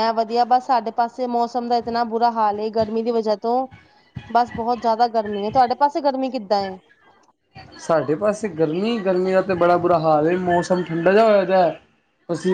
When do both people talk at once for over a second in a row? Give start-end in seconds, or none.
none